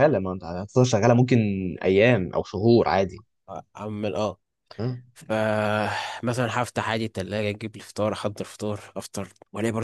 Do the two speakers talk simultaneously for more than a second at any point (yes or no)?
no